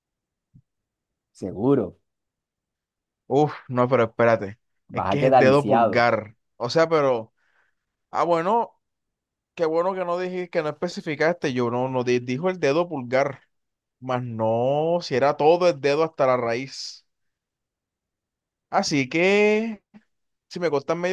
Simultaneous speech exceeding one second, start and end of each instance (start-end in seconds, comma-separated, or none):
4.9-6.1